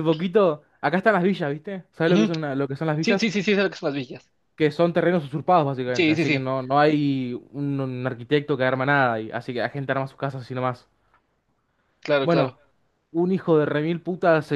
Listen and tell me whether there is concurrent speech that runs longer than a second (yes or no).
no